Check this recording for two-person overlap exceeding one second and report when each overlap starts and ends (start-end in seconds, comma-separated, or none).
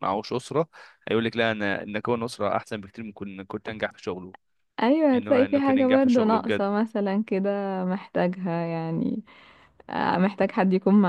5.1-6.7